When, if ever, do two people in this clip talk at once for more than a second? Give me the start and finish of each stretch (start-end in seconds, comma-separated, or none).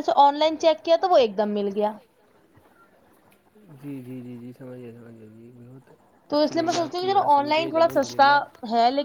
6.3-8.3